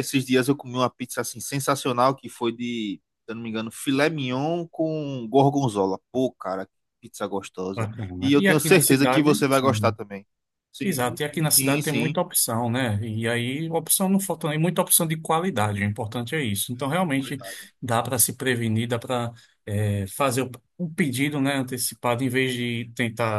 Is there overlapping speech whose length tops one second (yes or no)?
yes